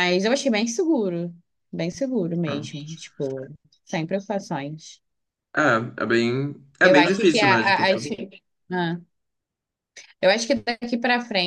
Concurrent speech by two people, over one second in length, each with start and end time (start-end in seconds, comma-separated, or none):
6.8-8.0